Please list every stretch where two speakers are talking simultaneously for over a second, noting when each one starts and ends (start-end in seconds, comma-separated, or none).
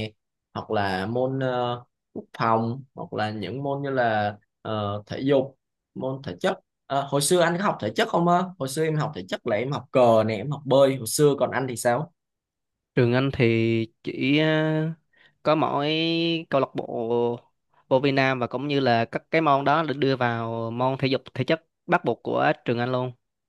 none